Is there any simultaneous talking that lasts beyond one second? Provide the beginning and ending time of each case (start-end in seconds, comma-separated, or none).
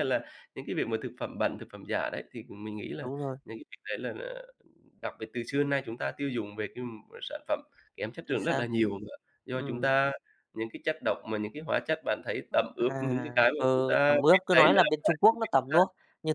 12.8-15.8